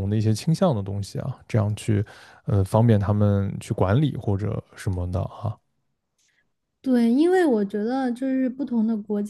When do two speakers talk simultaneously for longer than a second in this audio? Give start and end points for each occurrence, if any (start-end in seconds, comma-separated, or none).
none